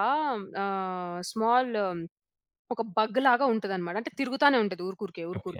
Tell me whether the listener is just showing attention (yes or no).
no